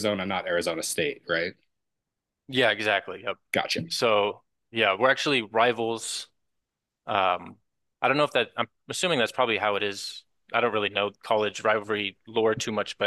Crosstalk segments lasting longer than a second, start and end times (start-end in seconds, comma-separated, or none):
none